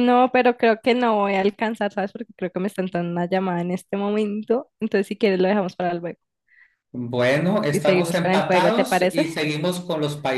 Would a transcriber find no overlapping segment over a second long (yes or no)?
no